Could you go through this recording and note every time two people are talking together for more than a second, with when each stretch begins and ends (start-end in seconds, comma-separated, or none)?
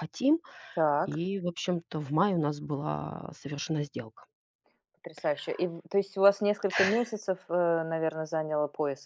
none